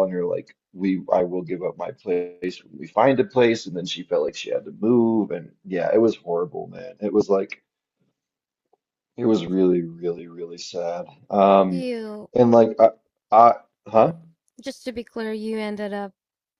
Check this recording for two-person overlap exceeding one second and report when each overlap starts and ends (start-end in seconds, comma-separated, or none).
none